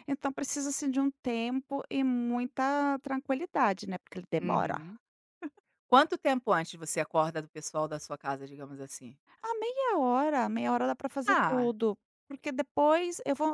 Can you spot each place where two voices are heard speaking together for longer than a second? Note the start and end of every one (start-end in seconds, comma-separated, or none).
none